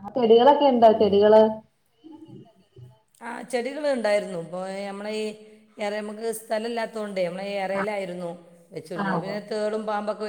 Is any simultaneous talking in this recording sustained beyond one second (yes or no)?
no